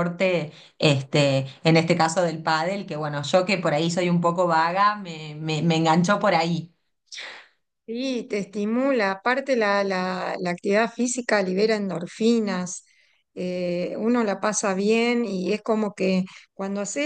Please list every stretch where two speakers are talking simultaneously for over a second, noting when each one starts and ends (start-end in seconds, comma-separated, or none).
none